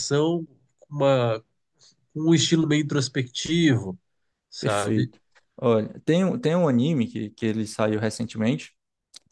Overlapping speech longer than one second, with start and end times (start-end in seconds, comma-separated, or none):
none